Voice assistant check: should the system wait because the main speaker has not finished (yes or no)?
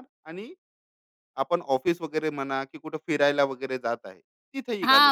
no